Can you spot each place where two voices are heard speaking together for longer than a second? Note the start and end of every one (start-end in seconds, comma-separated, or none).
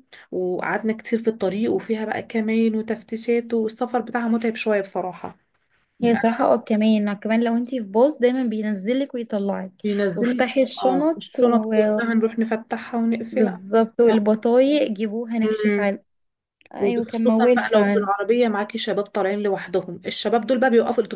10.1-12.1, 16.8-18.1